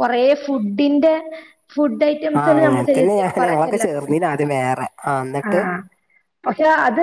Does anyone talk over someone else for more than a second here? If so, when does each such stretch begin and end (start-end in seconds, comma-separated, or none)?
2.4-4.1